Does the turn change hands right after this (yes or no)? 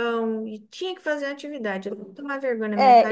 yes